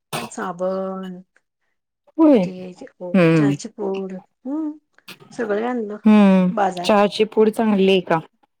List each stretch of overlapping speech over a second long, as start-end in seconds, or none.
none